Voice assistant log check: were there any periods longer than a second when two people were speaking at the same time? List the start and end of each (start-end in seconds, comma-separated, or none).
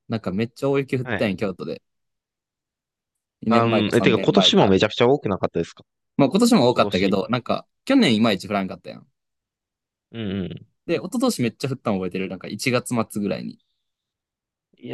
3.5-4.7